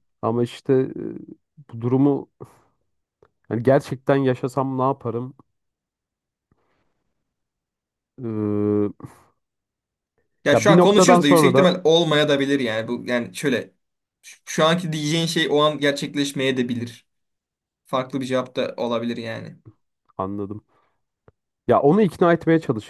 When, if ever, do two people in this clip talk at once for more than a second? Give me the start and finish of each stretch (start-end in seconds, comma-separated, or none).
10.5-11.7